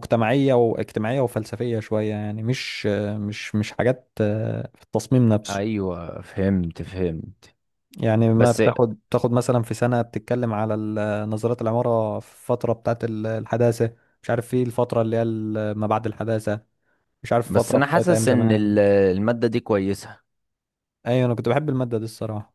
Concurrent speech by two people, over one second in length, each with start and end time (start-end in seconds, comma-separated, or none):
17.4-18.8